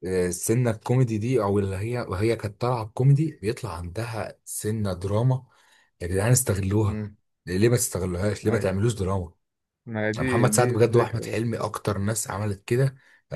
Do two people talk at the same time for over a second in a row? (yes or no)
yes